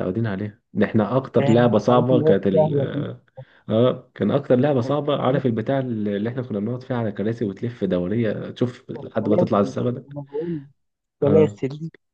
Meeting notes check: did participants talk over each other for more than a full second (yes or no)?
yes